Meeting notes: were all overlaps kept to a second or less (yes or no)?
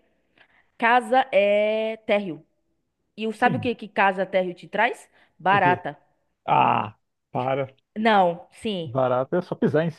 yes